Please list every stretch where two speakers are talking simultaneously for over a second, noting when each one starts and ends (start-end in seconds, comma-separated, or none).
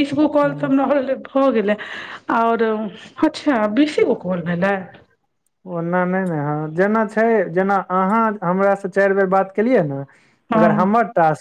none